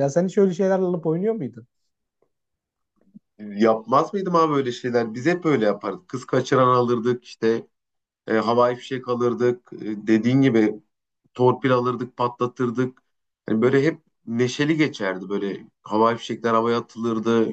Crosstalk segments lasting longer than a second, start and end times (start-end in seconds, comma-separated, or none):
none